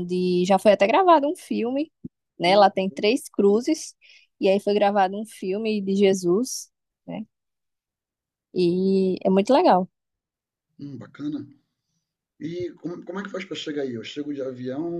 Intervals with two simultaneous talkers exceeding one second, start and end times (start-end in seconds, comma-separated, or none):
none